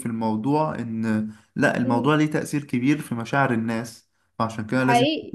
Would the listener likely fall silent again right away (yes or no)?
no